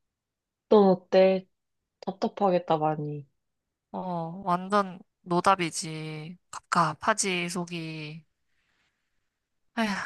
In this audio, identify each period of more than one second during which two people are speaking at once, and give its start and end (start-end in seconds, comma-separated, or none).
none